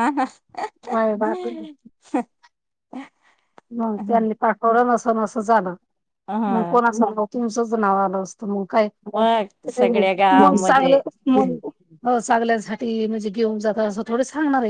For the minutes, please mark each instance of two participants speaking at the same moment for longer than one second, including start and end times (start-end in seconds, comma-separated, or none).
9.7-11.0